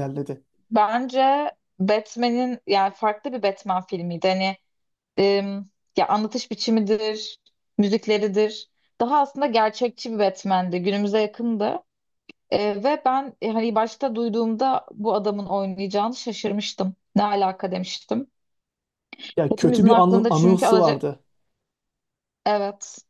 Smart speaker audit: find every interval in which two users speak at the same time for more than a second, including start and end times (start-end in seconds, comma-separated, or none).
19.5-21.0